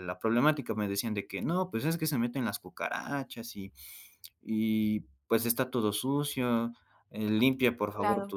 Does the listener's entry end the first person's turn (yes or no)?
no